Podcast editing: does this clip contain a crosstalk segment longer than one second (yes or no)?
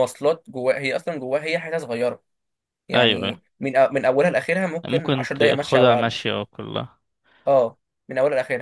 yes